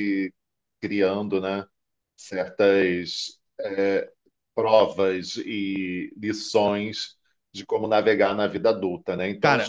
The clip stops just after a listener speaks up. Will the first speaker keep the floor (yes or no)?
yes